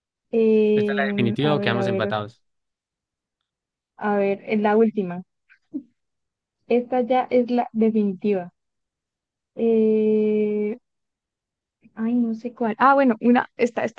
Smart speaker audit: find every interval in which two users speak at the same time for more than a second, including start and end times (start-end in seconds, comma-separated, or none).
0.7-2.1